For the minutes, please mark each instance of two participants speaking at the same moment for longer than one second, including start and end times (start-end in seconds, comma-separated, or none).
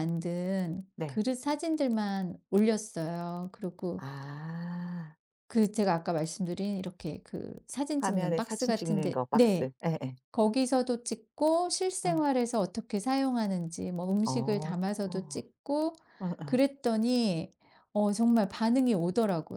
8.0-9.7